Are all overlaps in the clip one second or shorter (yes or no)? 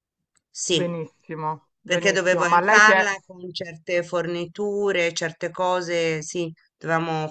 no